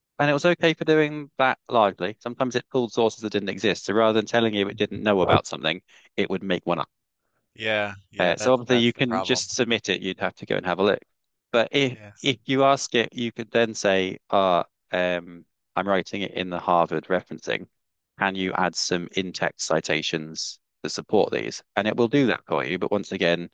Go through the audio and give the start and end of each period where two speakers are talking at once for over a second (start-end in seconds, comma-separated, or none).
8.2-9.4